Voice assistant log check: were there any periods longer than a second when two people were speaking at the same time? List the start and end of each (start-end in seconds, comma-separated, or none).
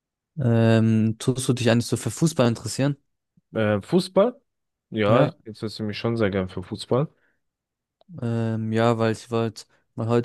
none